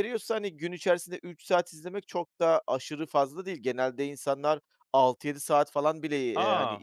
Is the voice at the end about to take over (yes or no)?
no